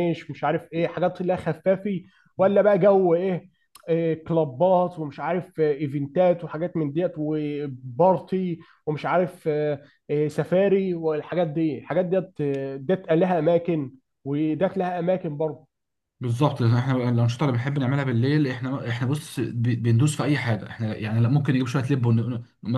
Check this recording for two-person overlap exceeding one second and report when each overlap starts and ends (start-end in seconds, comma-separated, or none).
none